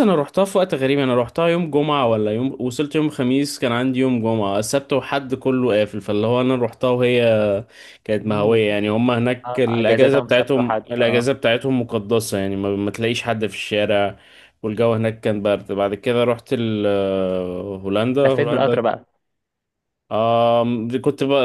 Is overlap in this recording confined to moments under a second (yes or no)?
no